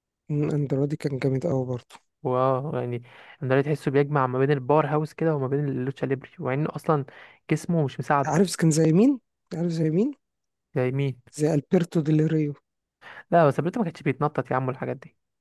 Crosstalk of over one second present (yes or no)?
no